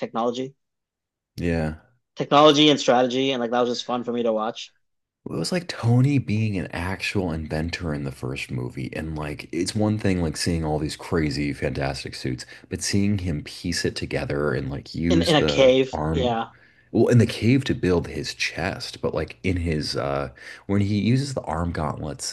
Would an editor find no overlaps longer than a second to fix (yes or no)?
no